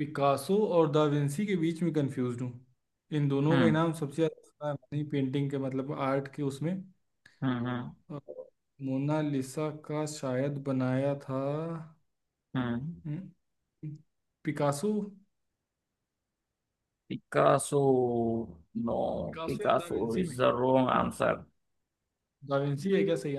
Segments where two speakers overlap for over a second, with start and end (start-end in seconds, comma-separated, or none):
19.4-21.0